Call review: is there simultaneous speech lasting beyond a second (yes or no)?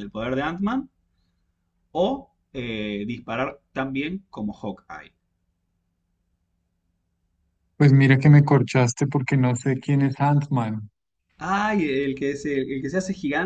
no